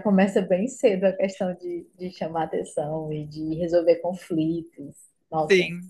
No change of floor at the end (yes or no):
no